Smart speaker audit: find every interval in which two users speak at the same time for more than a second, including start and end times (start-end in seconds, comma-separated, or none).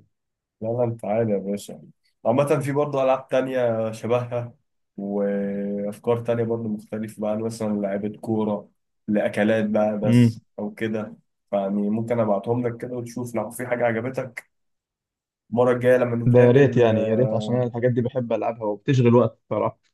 16.2-17.7